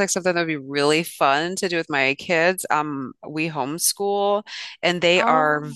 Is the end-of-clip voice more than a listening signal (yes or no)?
no